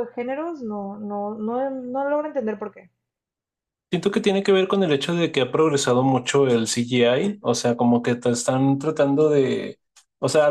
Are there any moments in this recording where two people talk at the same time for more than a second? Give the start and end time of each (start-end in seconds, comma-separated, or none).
none